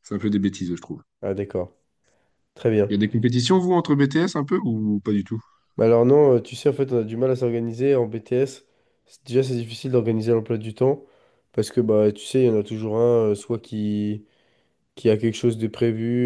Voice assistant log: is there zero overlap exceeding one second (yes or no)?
yes